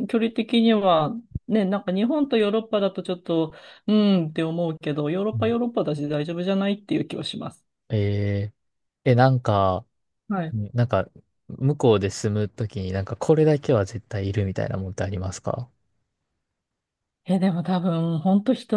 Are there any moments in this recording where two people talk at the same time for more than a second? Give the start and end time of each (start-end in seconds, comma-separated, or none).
none